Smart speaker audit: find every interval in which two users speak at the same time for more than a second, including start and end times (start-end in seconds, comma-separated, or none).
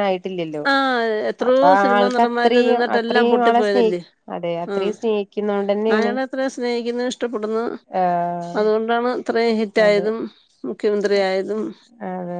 1.5-3.9